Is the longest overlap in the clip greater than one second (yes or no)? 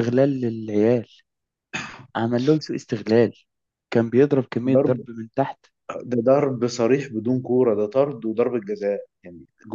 no